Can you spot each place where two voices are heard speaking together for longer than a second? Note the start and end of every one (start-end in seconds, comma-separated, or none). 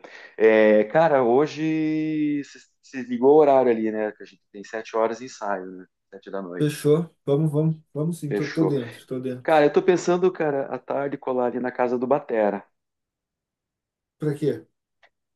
none